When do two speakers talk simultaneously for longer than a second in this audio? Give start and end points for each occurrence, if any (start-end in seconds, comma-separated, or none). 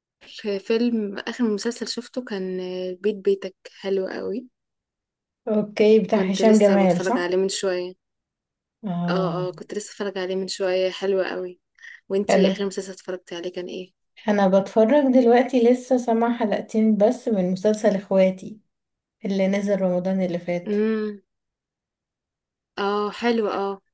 6.1-7.3